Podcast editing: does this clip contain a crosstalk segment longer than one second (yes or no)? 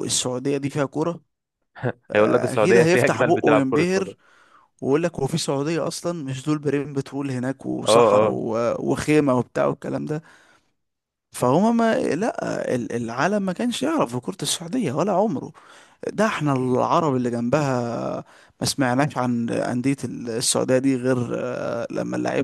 yes